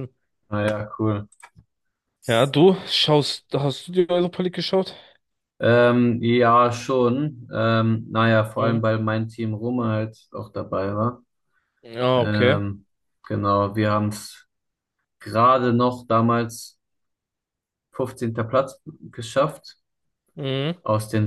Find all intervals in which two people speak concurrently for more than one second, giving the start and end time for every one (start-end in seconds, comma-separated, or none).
none